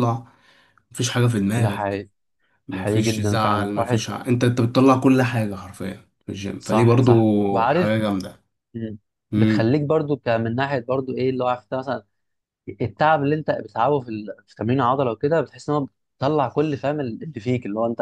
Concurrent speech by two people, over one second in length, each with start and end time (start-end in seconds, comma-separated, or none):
2.7-4.1, 6.6-8.0